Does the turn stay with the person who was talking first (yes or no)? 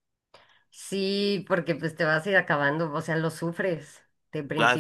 no